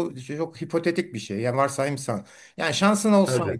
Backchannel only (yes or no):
yes